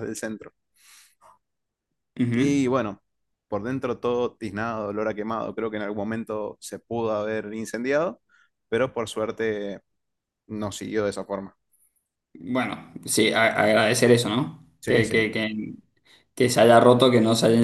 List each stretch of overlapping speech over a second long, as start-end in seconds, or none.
none